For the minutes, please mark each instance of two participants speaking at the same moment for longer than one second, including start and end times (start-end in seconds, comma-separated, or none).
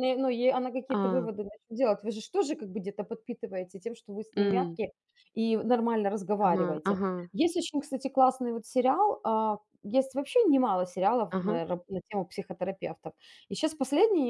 none